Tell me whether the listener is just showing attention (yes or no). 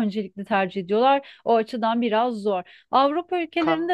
yes